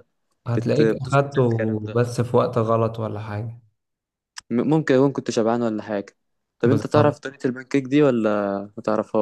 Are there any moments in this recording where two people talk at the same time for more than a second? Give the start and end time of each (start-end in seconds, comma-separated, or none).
0.6-2.1